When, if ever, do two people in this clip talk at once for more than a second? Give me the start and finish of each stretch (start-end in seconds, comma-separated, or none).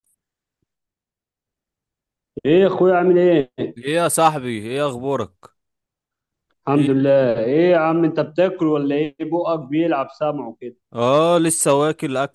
none